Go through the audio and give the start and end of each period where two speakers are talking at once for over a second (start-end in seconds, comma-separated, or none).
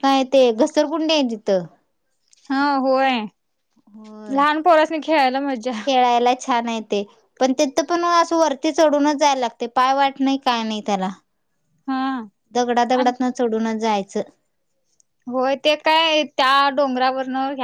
none